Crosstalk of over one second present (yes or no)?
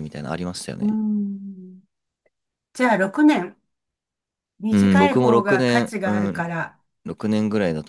yes